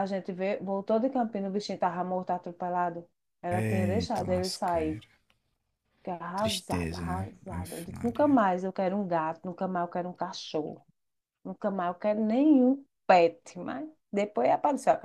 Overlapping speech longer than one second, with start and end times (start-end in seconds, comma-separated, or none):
3.5-5.0, 6.4-8.4